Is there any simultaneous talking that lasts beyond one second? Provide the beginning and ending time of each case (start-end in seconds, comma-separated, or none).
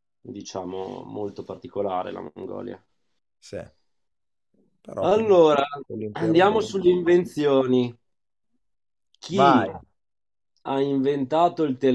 none